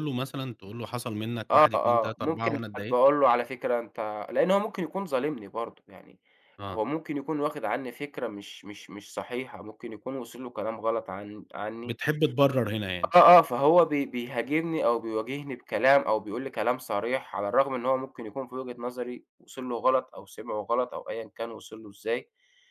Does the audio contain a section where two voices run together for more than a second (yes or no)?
yes